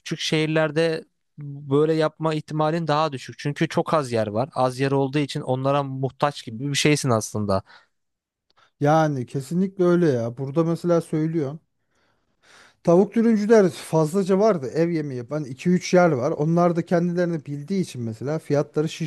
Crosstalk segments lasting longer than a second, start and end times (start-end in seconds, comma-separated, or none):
none